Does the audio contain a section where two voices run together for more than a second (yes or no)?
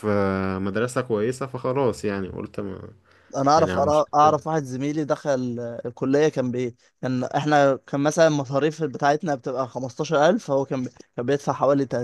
no